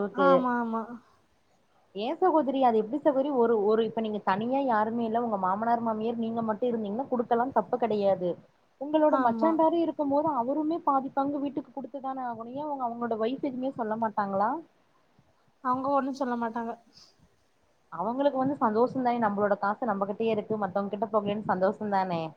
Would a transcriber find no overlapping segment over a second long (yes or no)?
yes